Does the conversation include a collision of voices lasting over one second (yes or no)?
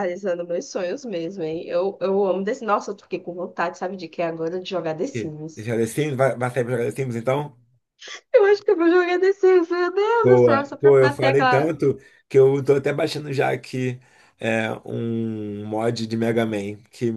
yes